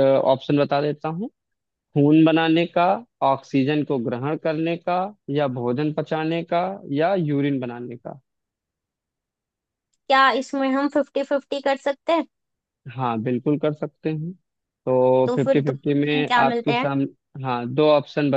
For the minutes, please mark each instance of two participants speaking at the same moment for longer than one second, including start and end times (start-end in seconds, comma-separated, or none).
15.2-16.9